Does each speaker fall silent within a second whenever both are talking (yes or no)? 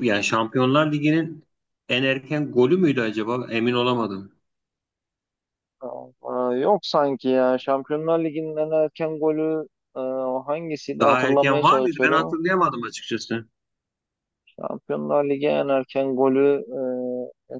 no